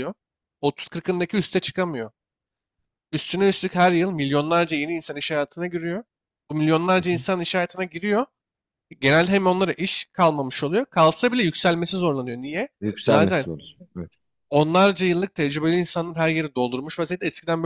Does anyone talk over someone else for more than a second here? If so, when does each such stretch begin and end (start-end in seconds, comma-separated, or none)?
none